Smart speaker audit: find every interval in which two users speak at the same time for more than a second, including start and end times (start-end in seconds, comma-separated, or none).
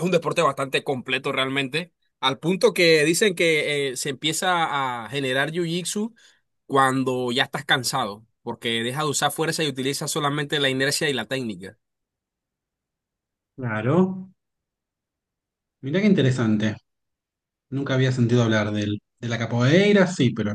none